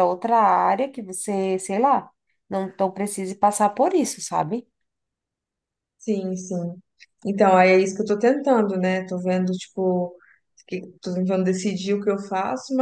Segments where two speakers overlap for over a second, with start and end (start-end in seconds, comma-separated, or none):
none